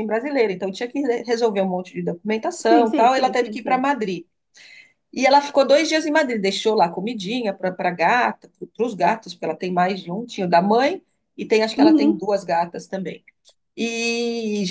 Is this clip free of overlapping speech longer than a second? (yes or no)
no